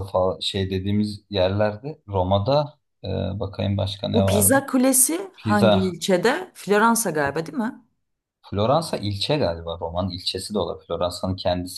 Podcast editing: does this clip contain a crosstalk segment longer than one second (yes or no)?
no